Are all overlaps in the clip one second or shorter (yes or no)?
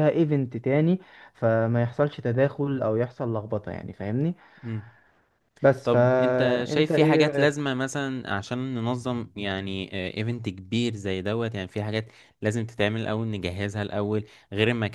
no